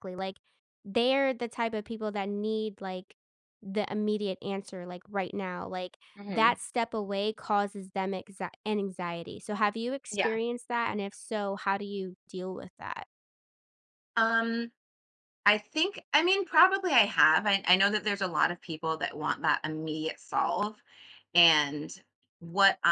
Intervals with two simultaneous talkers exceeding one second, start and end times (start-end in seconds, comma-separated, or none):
none